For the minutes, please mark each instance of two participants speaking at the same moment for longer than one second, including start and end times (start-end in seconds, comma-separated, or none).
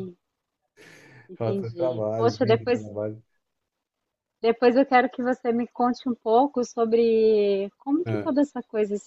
1.3-2.8